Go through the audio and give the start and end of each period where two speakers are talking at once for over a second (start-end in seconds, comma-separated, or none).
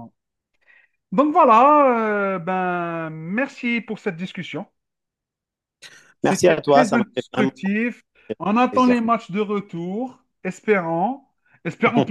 6.2-7.5